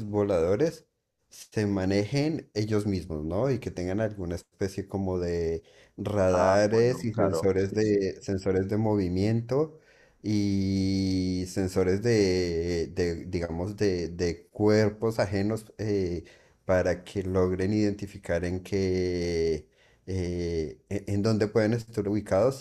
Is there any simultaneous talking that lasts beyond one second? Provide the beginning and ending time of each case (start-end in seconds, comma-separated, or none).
6.3-8.0